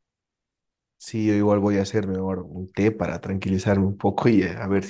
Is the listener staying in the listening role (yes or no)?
no